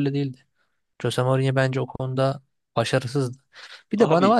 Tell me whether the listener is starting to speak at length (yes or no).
no